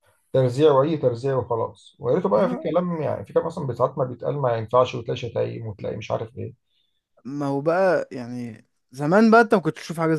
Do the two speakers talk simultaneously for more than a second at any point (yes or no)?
no